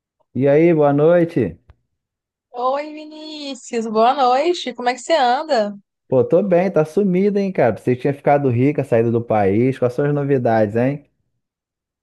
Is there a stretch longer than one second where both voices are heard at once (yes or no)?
no